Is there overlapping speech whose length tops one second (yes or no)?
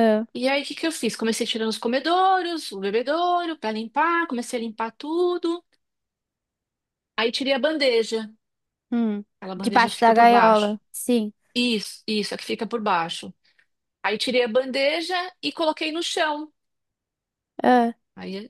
yes